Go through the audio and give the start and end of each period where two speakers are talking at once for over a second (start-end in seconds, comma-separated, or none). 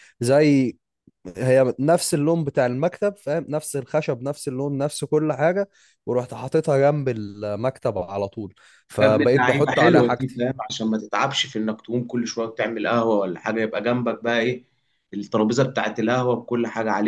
9.0-10.4